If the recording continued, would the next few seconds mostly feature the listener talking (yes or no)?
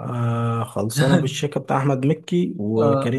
no